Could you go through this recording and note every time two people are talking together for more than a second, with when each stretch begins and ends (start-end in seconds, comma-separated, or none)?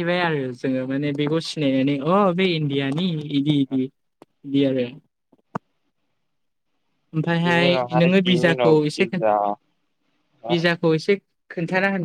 7.5-9.2